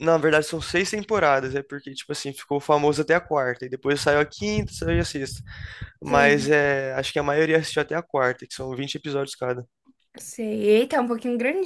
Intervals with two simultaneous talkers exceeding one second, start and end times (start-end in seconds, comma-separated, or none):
none